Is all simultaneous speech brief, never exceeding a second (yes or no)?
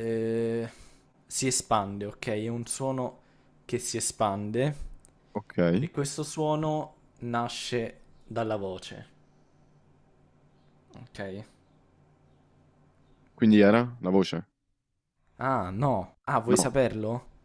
yes